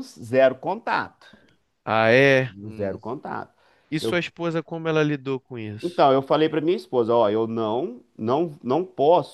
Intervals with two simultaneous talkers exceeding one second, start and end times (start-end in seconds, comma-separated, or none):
none